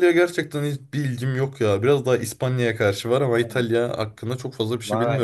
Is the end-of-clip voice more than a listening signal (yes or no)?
yes